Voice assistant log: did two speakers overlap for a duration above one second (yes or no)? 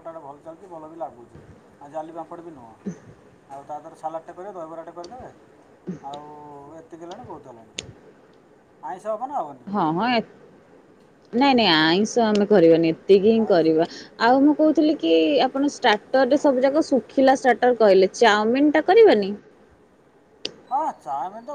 no